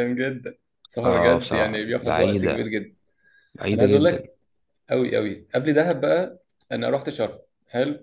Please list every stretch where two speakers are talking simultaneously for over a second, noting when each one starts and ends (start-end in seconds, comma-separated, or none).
1.0-2.7